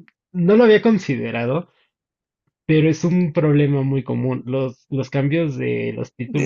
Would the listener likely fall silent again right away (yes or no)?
no